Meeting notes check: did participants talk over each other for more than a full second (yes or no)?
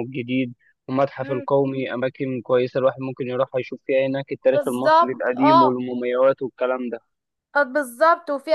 yes